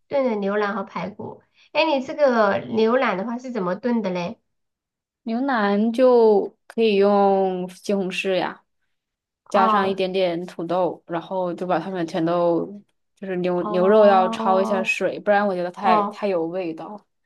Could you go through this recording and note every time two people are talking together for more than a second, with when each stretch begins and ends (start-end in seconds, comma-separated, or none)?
13.6-15.0